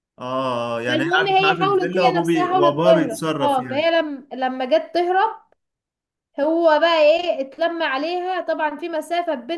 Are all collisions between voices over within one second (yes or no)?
no